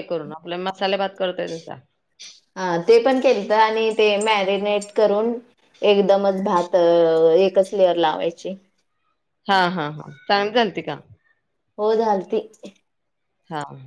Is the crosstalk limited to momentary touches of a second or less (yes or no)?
yes